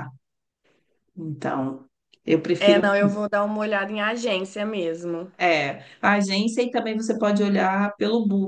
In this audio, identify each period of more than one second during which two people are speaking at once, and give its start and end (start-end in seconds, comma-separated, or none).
none